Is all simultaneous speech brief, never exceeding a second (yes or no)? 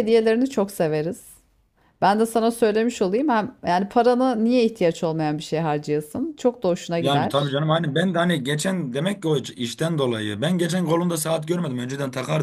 yes